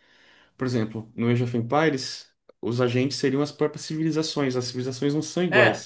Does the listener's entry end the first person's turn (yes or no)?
yes